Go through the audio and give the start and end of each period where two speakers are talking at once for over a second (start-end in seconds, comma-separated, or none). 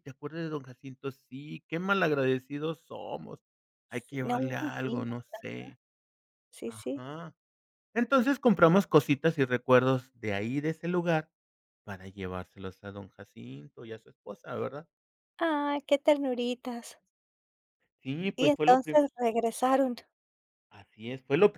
3.9-5.4